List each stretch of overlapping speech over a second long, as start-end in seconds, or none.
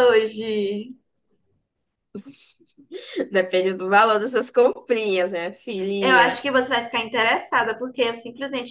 none